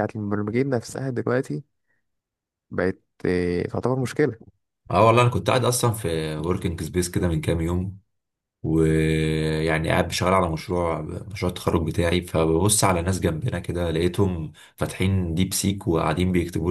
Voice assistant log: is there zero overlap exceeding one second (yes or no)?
yes